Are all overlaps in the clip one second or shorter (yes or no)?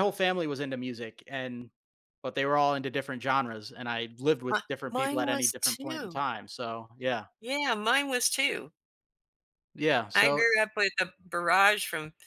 no